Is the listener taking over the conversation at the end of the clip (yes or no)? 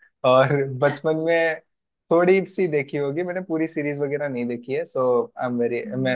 no